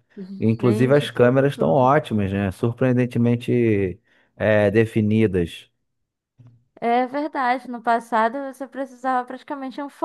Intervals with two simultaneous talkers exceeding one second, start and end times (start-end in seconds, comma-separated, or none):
0.6-1.9